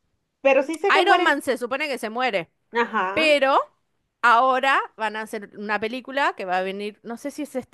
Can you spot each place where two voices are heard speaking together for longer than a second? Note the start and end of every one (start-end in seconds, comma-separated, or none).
none